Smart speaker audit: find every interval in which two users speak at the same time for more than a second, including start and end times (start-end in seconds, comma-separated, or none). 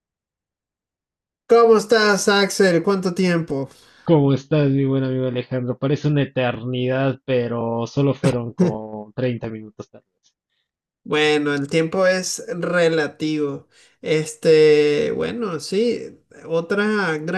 none